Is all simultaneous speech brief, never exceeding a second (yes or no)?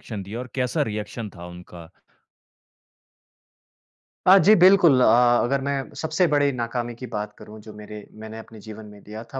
yes